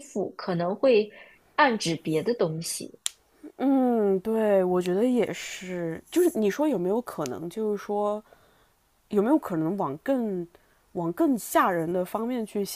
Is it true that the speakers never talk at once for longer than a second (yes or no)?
yes